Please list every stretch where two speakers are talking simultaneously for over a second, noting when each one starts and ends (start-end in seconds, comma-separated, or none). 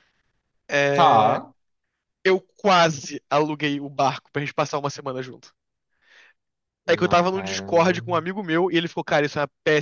6.9-8.2